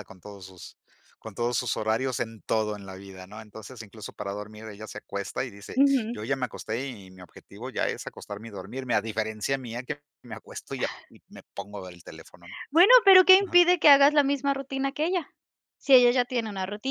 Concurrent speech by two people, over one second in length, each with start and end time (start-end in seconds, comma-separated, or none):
none